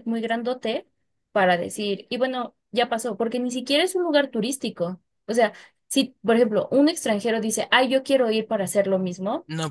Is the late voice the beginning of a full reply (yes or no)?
no